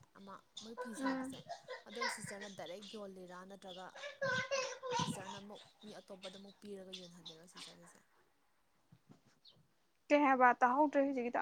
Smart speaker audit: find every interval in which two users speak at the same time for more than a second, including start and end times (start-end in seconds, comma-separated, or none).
none